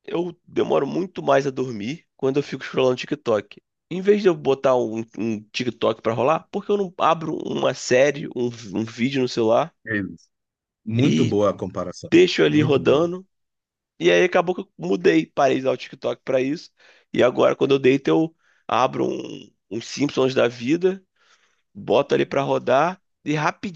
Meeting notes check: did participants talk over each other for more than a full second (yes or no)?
no